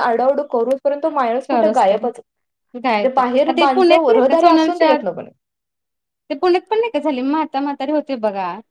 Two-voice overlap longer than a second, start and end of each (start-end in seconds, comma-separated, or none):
2.8-5.0